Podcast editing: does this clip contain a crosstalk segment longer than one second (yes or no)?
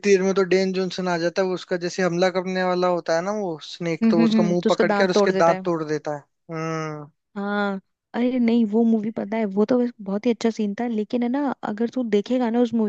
yes